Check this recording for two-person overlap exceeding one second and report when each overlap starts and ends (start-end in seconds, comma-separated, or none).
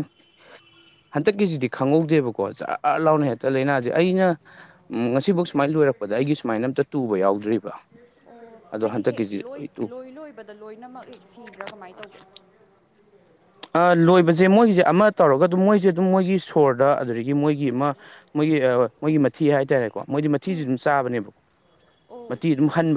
none